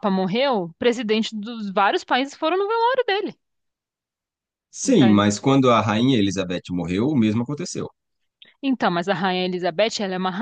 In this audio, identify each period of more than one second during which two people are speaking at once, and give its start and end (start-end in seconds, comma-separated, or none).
none